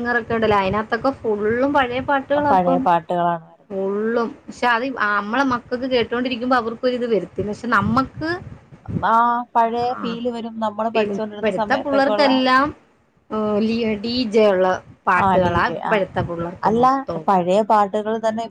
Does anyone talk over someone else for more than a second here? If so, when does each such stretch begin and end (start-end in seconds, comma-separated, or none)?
10.9-12.3